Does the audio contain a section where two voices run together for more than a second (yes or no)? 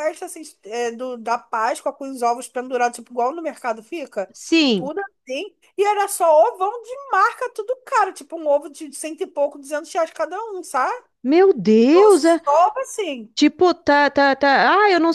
no